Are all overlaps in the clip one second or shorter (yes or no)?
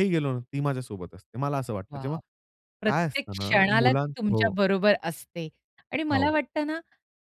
no